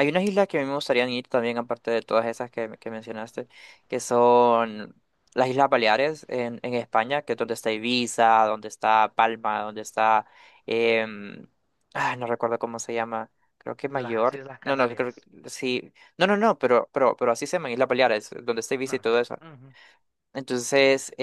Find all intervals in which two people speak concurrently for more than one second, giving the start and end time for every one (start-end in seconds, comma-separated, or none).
13.9-15.2